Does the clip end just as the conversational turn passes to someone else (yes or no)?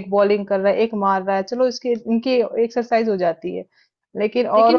yes